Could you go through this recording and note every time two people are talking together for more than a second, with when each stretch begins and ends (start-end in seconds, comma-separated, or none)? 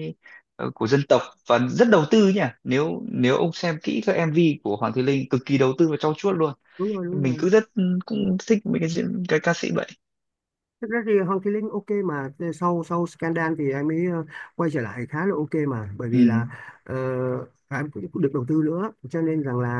none